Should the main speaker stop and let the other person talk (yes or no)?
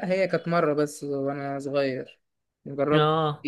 no